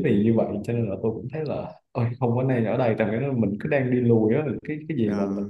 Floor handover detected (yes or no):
no